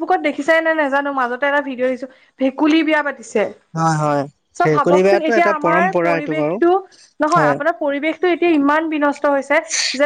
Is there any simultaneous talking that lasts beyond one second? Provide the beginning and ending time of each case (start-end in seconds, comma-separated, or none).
4.6-6.6